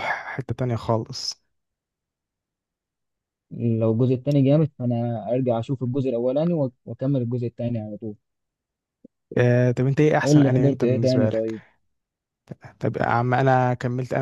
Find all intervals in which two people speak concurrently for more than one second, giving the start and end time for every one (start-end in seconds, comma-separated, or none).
10.2-11.5